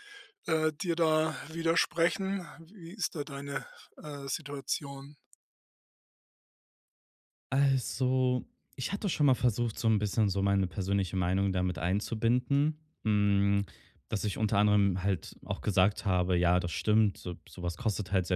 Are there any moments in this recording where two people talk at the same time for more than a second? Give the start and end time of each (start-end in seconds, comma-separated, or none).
none